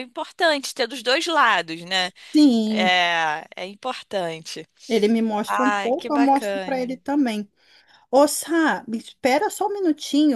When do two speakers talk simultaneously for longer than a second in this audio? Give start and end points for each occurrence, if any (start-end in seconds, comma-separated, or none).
5.5-6.9